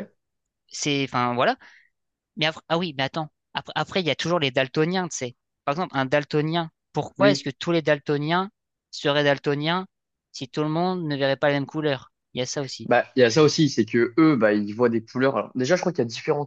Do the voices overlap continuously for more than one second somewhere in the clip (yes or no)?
no